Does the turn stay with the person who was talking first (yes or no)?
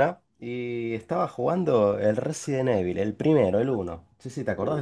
no